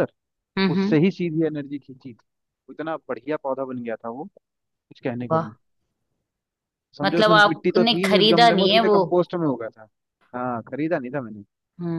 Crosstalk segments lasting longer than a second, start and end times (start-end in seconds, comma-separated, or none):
7.0-9.0